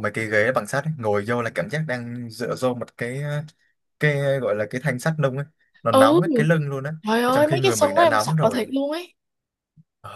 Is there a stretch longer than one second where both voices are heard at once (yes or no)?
yes